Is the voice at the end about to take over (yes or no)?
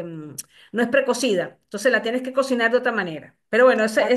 no